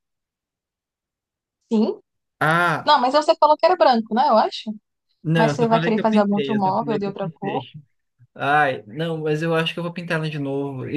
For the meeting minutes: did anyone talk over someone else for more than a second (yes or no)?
yes